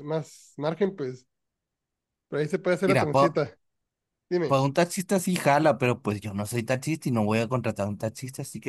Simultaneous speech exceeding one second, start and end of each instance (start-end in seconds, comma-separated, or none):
none